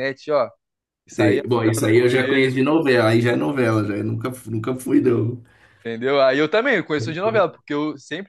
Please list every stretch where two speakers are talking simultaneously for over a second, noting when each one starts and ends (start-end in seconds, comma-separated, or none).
1.2-2.6